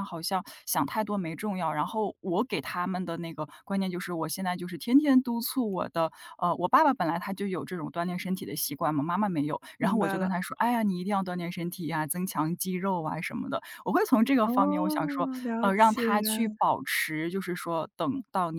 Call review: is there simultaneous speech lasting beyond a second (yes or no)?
yes